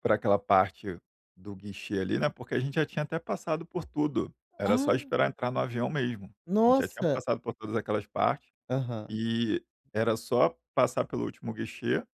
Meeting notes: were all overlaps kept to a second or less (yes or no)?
yes